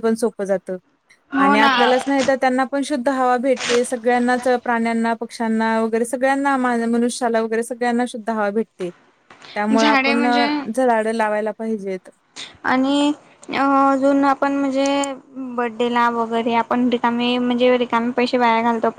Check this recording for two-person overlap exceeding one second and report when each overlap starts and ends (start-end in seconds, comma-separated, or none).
none